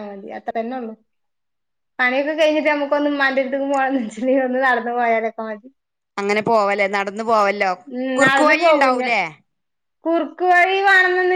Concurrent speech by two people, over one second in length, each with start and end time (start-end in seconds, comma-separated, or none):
none